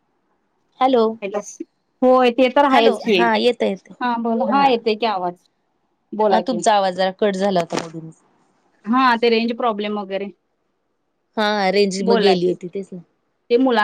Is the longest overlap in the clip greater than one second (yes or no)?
no